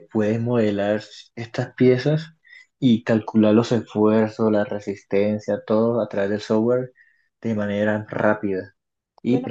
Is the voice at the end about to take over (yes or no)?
yes